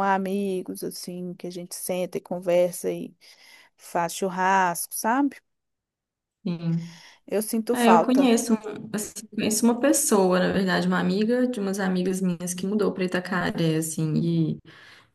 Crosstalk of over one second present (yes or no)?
no